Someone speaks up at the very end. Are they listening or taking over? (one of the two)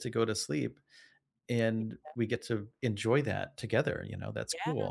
taking over